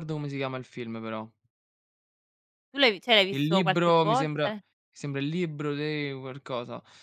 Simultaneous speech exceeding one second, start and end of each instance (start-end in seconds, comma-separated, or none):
3.3-4.6